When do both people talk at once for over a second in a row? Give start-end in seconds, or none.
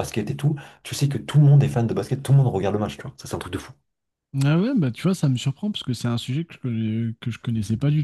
none